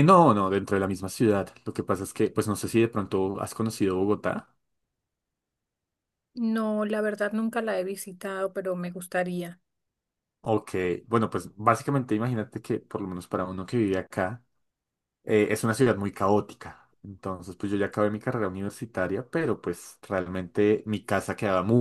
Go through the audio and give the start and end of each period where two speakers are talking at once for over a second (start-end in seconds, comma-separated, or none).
none